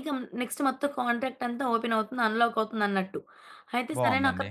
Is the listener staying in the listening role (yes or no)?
yes